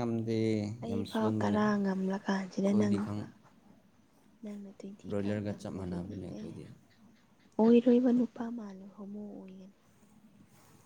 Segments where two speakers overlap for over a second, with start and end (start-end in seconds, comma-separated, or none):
0.8-3.2